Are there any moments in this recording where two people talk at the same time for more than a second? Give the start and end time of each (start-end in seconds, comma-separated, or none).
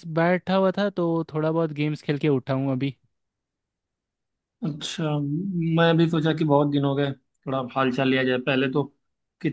none